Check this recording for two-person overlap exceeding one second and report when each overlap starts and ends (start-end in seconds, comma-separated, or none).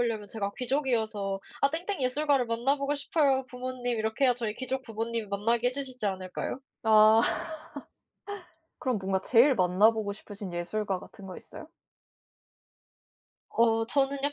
none